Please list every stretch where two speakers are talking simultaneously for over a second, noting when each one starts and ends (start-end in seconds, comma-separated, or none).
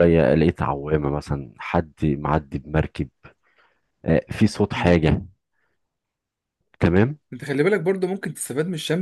none